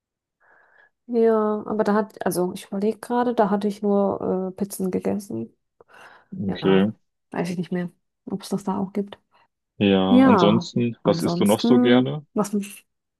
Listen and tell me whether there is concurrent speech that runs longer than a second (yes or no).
yes